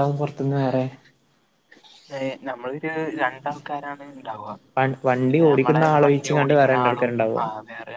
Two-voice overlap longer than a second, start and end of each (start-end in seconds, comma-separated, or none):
5.3-7.4